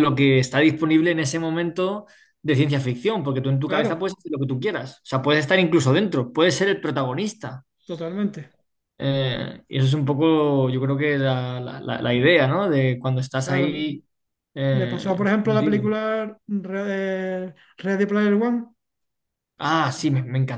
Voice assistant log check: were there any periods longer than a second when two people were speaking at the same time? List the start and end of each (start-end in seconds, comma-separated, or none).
14.7-15.9